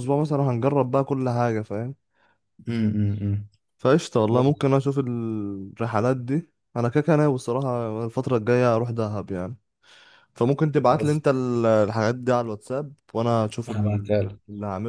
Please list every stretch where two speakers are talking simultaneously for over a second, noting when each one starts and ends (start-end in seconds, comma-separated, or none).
none